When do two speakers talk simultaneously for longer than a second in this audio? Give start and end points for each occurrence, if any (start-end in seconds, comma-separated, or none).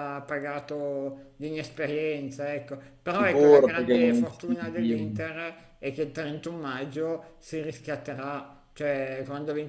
3.1-5.2